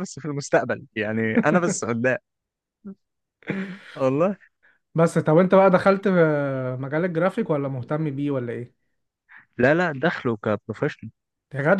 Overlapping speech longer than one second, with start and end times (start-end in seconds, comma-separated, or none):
none